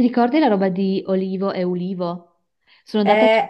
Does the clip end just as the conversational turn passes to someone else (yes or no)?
no